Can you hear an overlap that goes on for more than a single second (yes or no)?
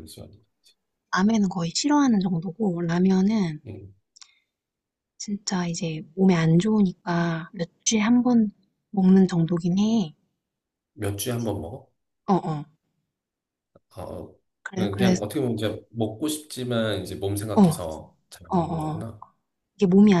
no